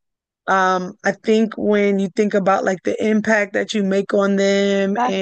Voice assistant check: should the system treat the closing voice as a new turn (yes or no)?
no